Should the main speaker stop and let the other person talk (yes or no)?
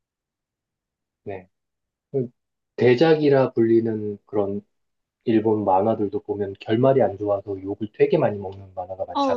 yes